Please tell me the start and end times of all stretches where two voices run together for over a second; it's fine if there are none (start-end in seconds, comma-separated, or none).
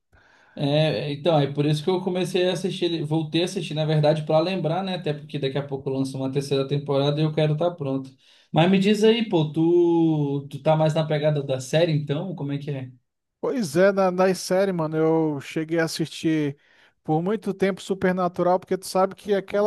none